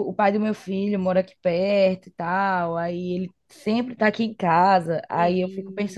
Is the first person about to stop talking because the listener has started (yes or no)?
no